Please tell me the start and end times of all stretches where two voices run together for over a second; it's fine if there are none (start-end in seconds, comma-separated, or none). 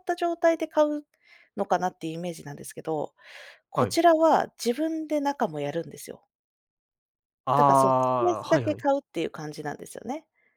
7.6-8.9